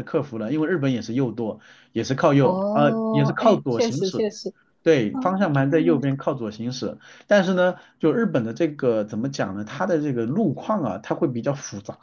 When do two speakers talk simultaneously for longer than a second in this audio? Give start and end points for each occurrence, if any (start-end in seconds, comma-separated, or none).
2.4-4.2